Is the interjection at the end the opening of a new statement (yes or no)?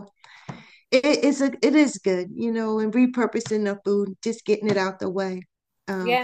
yes